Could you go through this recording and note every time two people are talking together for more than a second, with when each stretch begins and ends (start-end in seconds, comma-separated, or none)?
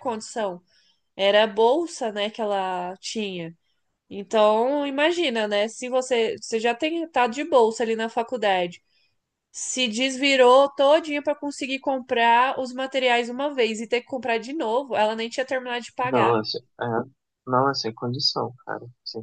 none